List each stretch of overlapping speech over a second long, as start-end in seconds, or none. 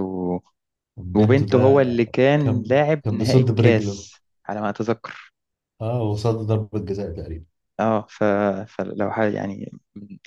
2.4-4.1